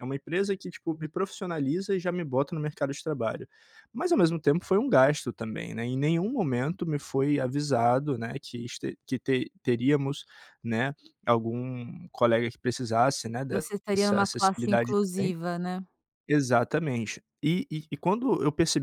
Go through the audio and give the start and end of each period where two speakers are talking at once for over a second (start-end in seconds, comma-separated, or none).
13.5-15.3